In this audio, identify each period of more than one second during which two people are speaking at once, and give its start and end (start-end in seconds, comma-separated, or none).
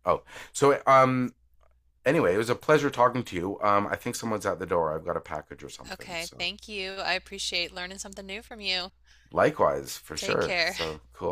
none